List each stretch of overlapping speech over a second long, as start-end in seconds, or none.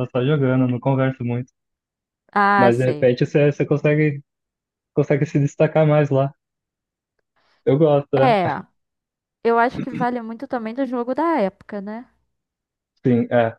none